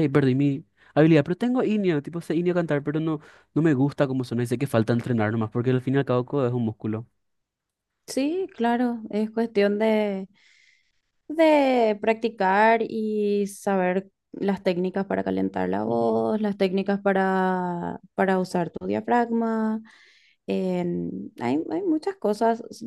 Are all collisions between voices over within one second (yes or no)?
yes